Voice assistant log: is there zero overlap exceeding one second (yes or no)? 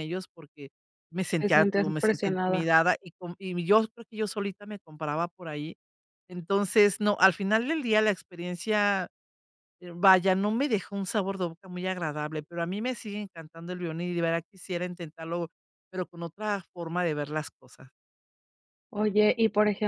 no